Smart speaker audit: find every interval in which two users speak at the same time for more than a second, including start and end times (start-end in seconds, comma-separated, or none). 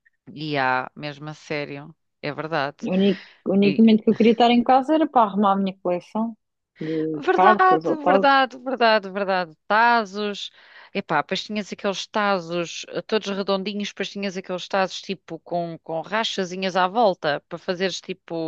7.2-8.5